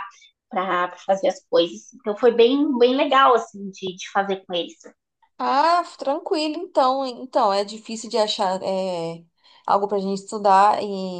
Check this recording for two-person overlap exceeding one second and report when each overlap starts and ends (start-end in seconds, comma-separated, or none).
none